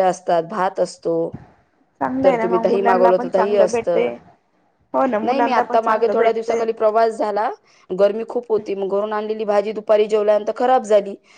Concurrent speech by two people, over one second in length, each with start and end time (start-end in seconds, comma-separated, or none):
2.2-4.1, 5.2-6.6